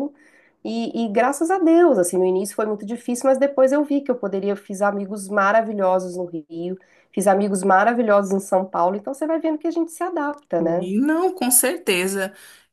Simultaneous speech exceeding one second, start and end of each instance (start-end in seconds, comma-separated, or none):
none